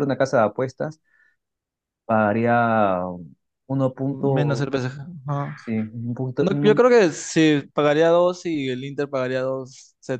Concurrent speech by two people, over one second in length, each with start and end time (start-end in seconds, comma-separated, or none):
none